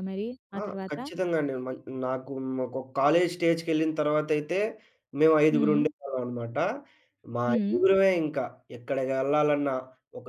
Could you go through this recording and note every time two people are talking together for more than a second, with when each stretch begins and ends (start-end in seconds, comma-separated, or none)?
none